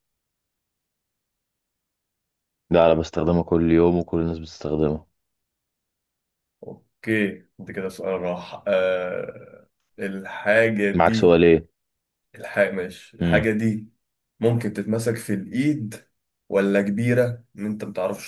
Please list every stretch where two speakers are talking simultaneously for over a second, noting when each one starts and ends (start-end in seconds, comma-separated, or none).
none